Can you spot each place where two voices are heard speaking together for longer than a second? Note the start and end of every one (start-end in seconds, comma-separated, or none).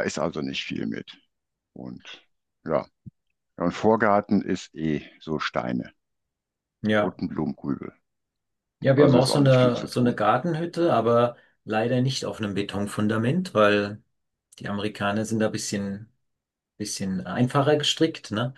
8.9-10.2